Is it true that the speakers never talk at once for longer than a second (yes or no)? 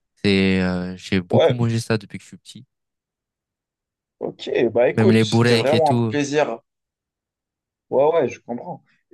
no